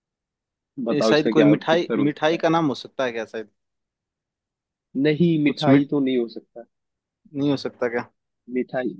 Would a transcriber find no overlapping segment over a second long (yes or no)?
no